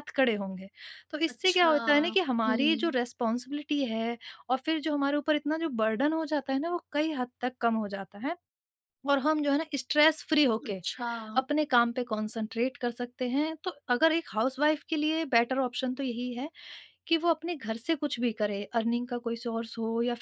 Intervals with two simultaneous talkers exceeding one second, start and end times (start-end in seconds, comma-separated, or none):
1.3-2.9